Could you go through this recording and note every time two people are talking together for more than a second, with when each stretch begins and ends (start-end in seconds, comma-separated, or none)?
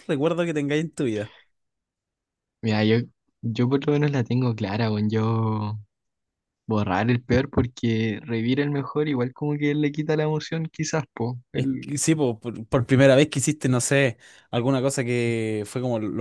none